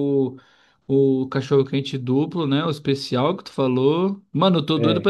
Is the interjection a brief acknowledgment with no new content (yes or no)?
yes